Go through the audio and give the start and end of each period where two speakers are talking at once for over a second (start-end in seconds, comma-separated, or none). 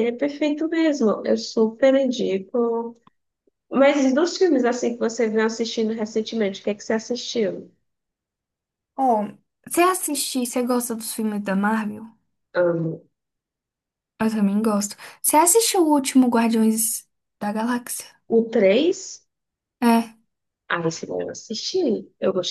none